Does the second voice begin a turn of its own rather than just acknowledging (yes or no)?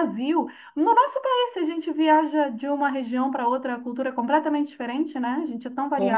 yes